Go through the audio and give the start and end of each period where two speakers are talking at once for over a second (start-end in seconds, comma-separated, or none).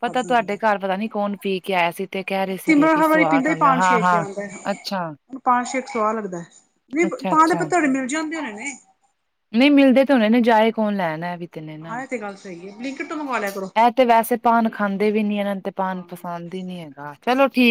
2.6-4.2